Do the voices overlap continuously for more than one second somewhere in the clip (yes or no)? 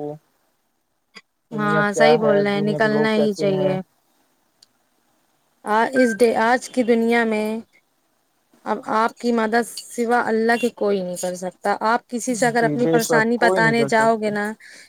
yes